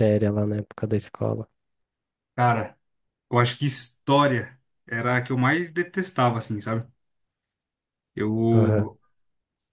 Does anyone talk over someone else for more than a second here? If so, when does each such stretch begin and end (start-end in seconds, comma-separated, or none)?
none